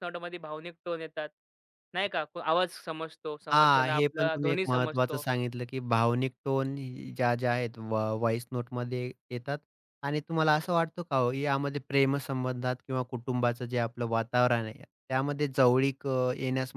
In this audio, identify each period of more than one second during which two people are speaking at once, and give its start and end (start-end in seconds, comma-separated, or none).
3.5-5.2